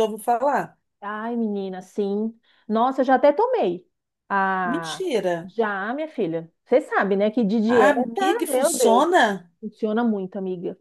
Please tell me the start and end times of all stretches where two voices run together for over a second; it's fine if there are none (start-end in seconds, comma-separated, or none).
7.7-9.1